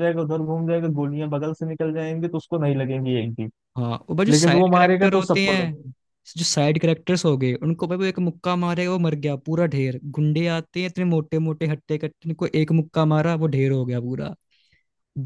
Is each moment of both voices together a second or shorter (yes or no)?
no